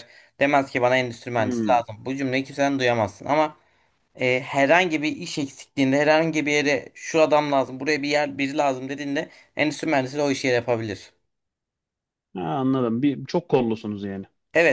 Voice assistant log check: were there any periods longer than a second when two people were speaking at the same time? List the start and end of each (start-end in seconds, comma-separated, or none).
none